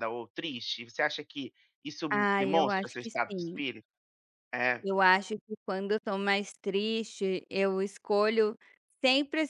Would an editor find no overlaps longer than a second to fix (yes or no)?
no